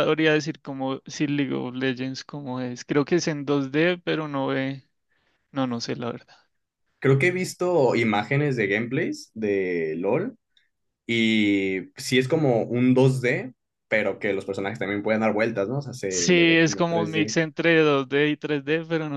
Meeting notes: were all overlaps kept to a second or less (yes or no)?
no